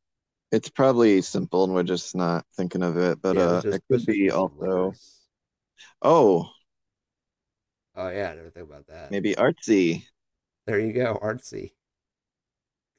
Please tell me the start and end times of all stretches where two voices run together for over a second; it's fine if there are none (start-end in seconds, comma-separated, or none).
3.3-5.0